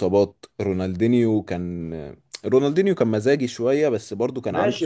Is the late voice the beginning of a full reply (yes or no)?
yes